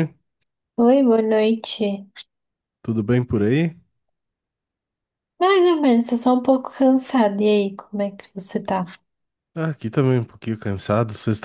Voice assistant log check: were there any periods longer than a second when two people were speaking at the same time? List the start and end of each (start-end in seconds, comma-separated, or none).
none